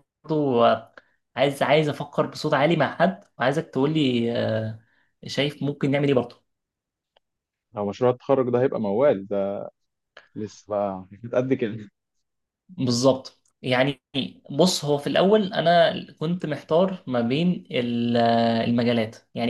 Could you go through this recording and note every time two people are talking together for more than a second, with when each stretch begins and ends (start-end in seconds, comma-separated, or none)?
none